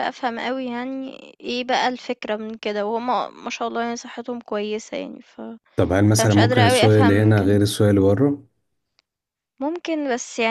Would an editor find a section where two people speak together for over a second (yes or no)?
yes